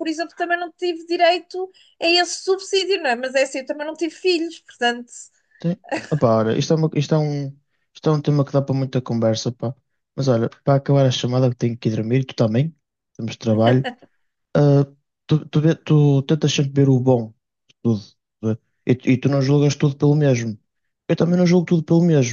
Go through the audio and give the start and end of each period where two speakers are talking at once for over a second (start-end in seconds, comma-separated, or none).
none